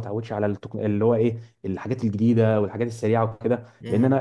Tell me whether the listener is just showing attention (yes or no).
yes